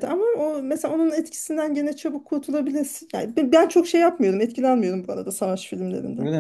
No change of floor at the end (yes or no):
no